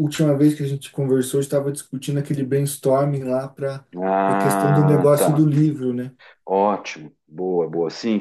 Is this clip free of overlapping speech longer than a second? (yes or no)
no